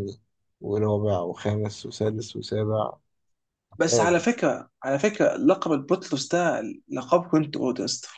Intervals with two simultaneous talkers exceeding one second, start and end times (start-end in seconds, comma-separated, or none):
none